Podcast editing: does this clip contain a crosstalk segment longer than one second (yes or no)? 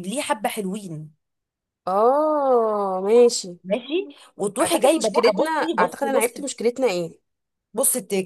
yes